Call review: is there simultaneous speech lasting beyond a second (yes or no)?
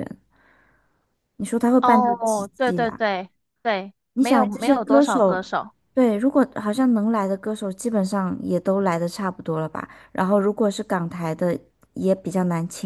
yes